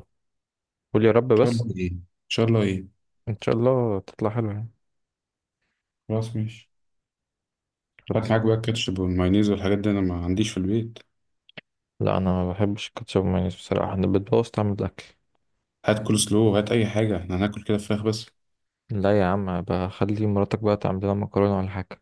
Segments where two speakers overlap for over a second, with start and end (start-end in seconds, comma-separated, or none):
none